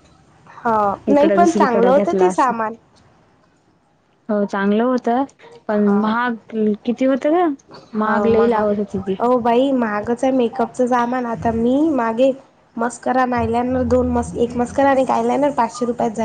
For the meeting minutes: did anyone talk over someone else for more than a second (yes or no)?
yes